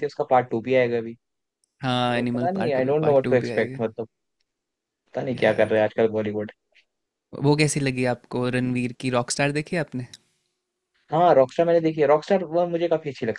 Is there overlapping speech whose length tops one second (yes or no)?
yes